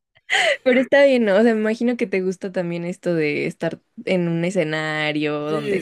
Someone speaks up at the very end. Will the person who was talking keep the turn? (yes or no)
no